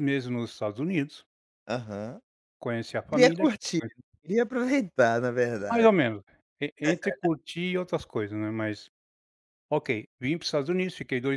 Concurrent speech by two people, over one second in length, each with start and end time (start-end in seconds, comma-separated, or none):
none